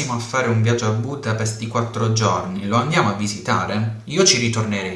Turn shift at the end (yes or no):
yes